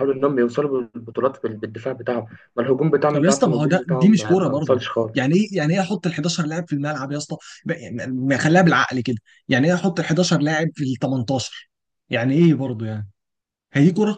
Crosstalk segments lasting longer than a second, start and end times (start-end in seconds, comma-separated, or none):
3.1-5.3